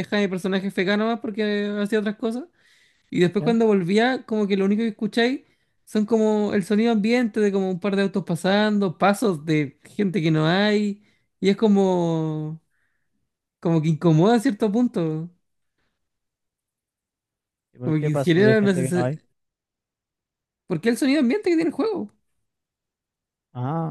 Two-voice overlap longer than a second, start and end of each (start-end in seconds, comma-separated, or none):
17.8-19.2